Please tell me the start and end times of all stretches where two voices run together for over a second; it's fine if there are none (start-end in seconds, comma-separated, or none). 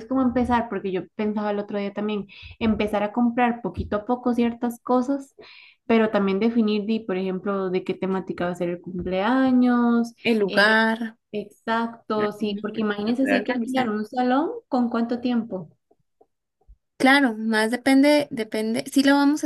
12.1-13.9